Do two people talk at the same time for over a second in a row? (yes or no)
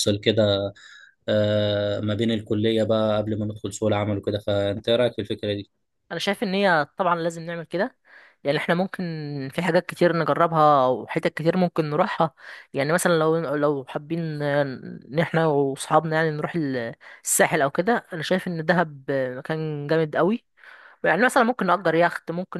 no